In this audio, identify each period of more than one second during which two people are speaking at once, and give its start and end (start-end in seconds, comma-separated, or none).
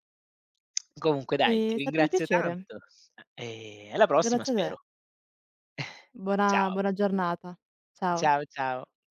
1.4-2.7